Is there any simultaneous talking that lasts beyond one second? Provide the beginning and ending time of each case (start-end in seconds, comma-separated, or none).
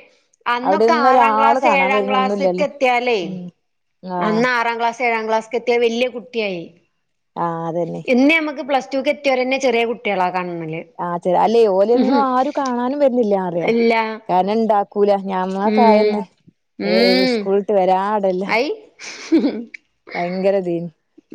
0.7-2.6